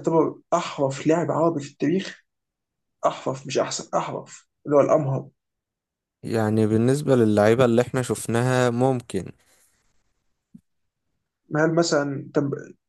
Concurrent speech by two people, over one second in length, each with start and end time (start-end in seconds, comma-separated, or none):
none